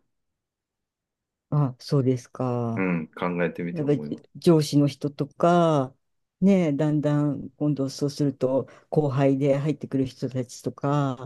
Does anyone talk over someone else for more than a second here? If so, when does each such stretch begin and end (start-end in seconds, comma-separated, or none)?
none